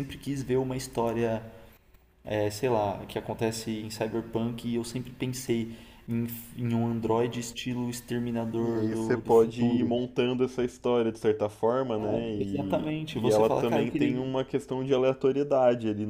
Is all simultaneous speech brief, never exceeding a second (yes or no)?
no